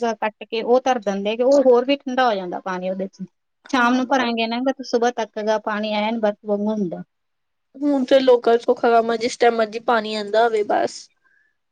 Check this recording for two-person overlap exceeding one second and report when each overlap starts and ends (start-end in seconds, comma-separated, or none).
none